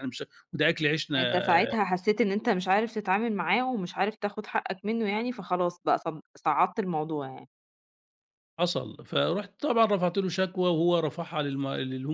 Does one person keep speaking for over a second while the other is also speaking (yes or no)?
no